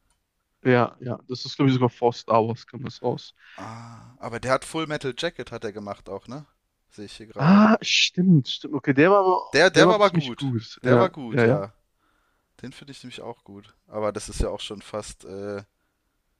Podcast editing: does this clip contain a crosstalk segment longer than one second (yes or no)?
yes